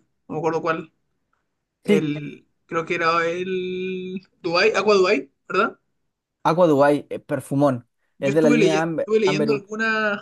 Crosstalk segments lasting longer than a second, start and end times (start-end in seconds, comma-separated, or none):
8.2-9.6